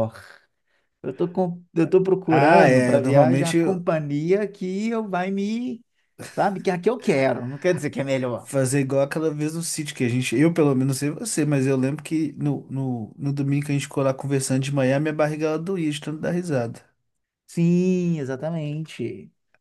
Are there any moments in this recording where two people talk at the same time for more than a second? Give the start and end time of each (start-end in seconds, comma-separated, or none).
2.2-3.6